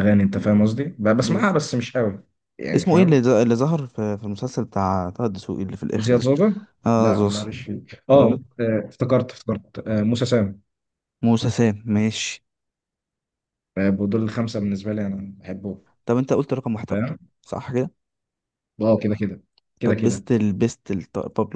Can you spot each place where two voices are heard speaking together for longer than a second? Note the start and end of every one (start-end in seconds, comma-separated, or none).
none